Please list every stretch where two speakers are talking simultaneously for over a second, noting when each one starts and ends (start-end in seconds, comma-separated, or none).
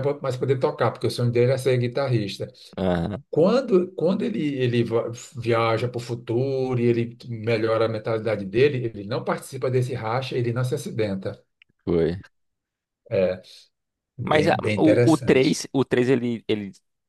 14.2-15.6